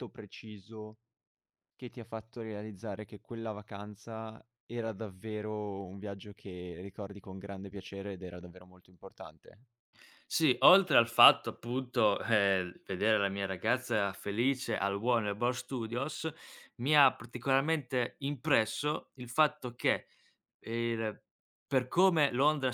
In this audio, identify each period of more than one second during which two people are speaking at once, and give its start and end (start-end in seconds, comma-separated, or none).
none